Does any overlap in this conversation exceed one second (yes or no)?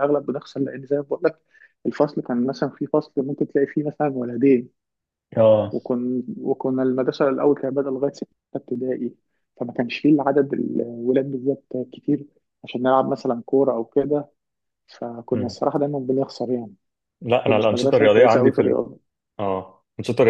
yes